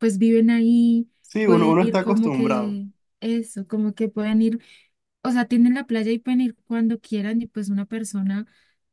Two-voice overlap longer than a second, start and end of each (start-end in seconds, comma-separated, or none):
1.4-2.8